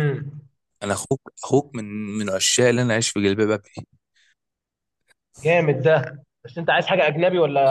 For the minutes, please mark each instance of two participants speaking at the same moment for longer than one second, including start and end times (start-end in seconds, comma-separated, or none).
none